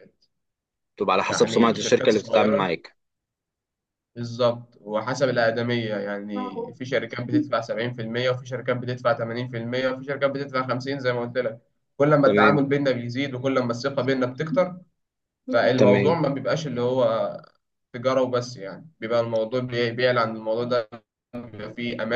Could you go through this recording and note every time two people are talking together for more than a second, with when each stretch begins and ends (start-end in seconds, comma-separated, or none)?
1.3-2.7